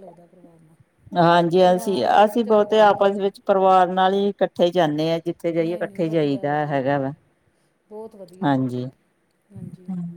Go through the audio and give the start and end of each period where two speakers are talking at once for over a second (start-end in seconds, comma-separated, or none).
1.6-3.2, 5.6-7.1